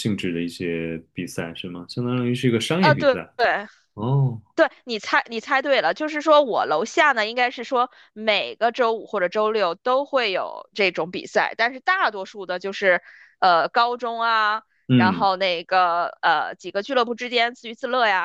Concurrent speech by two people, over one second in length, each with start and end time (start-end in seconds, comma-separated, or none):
none